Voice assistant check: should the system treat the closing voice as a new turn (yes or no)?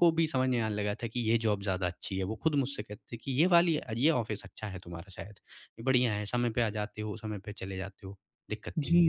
yes